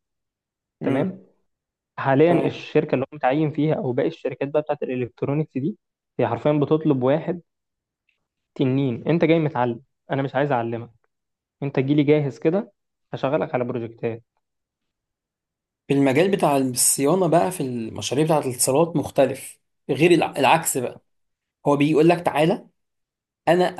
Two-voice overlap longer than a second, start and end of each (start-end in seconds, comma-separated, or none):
none